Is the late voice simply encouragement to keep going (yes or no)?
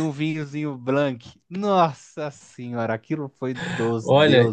no